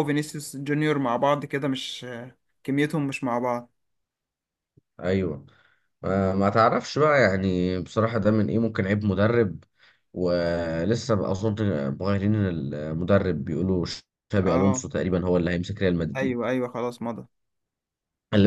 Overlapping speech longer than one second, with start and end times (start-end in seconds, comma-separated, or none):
none